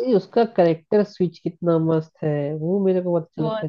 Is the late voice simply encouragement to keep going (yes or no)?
yes